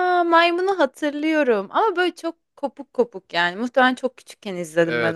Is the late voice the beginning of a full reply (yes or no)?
yes